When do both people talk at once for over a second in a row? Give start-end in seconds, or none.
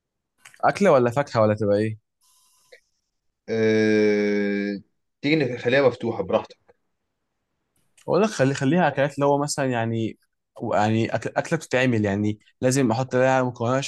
none